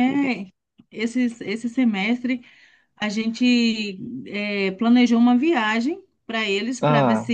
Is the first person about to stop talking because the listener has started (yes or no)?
no